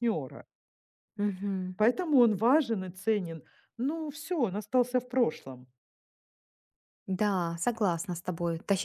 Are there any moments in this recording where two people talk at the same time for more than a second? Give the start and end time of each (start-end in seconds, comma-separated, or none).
none